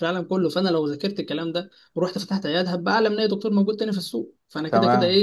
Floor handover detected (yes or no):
no